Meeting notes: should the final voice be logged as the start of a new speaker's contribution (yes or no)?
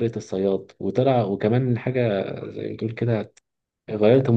no